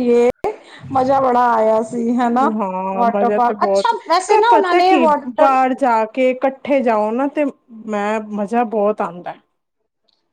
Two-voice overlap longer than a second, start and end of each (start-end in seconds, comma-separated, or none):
2.9-5.6